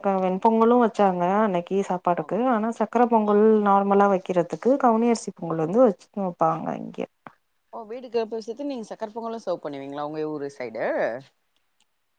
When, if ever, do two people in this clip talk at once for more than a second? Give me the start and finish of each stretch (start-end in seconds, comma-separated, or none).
none